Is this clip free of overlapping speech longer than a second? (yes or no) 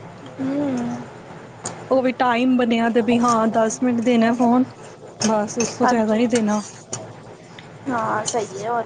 yes